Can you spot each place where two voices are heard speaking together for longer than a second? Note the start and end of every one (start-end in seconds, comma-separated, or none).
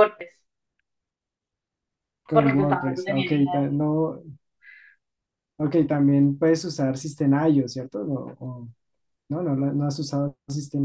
2.3-3.6